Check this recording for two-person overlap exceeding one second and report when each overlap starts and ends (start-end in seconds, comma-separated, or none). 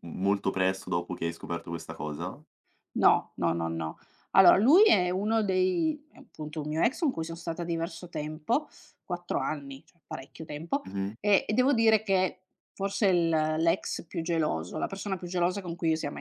none